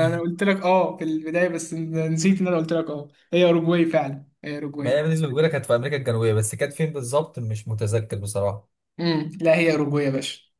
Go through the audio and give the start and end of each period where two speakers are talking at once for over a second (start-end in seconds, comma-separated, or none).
none